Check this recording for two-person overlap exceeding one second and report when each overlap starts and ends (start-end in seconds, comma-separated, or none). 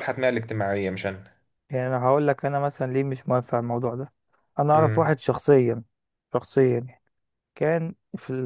none